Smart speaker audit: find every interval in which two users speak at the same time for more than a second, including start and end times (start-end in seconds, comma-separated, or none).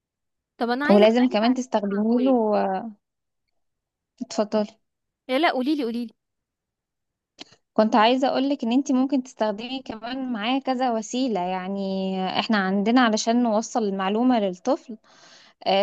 0.9-2.4